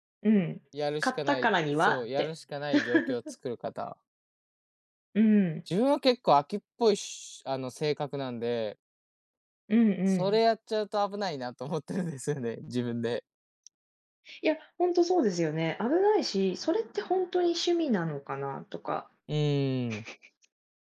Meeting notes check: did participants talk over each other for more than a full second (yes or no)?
yes